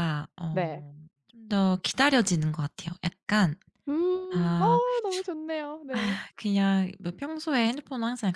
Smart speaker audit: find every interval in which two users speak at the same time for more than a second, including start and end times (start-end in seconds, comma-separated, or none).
none